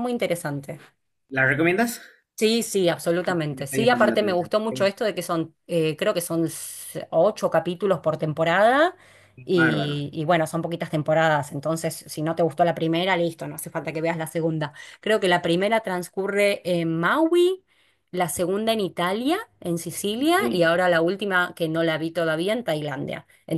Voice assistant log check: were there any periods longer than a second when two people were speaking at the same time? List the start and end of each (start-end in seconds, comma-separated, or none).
3.5-4.8